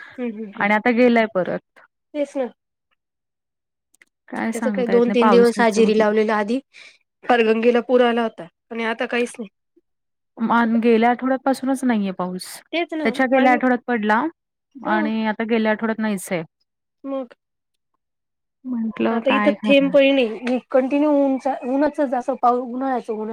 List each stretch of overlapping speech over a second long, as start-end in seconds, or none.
4.5-6.1